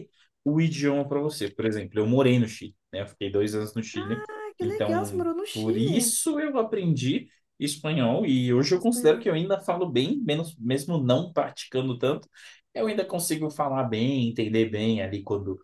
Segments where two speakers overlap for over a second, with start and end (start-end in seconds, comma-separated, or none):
4.6-6.2